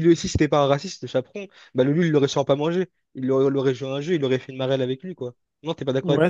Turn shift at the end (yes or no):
yes